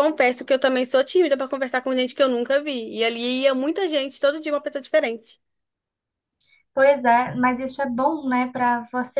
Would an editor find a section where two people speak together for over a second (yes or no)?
no